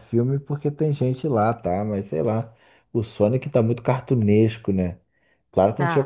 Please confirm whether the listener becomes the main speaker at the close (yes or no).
no